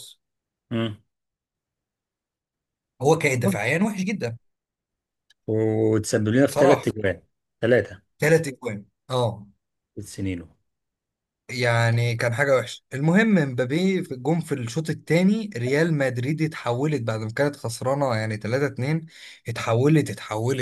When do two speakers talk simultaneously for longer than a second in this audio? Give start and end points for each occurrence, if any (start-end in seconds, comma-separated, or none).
none